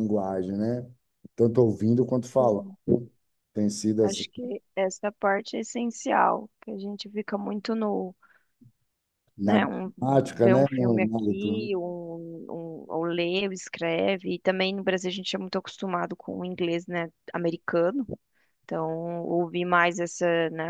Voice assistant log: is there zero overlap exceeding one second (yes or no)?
no